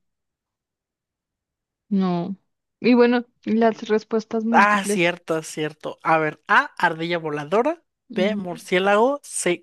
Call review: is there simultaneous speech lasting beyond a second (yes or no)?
no